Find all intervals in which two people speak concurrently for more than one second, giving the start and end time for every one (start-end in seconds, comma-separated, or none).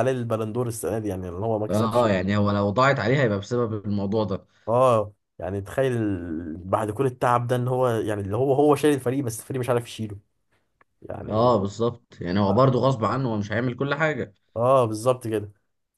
none